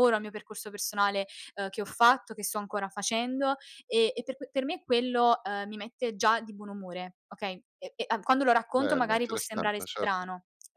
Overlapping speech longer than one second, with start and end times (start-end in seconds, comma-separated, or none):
8.7-10.3